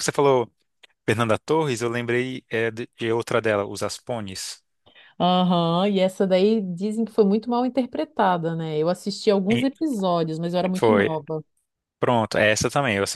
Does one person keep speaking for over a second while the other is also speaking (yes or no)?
no